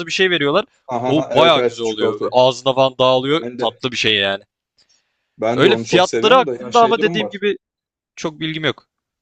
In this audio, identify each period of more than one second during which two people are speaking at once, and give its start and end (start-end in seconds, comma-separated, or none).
1.1-2.4, 5.5-7.4